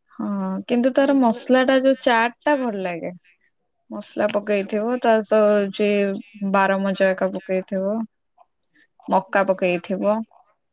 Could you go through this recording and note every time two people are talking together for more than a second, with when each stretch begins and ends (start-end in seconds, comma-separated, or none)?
1.1-2.6